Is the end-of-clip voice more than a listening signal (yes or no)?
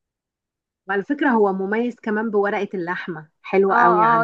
yes